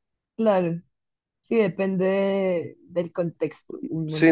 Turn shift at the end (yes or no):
yes